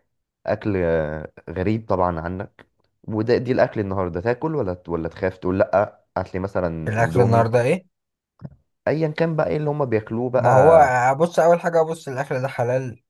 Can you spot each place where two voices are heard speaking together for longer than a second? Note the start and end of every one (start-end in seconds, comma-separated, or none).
none